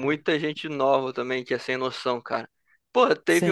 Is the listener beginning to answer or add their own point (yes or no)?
no